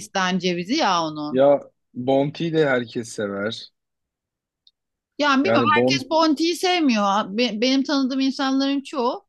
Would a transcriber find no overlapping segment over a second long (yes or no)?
yes